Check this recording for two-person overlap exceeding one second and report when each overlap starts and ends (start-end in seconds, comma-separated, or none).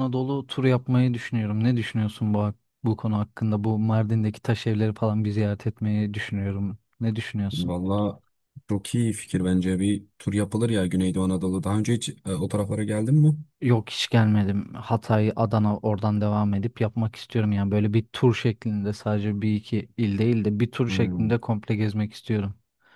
none